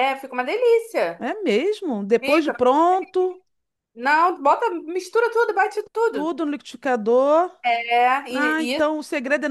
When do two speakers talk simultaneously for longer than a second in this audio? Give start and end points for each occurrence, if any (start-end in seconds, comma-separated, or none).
none